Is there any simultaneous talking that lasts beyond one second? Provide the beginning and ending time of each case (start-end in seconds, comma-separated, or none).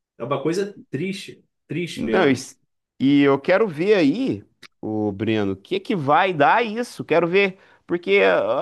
none